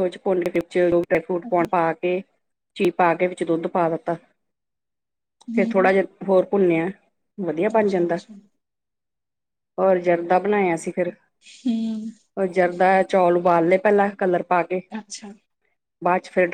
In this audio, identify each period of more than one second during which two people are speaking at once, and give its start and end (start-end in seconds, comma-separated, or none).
none